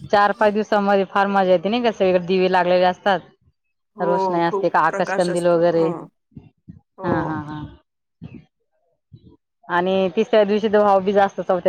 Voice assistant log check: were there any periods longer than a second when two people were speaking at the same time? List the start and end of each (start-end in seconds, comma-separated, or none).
4.0-5.9